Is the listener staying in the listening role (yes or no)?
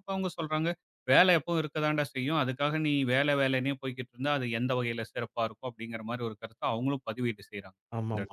no